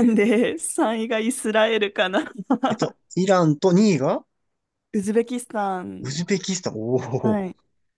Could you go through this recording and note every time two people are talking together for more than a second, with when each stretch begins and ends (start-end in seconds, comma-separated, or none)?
none